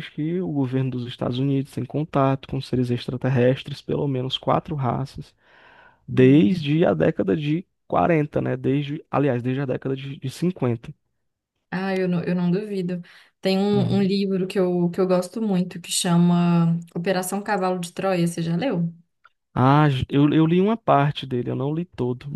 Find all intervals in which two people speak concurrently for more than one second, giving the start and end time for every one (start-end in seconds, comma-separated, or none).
none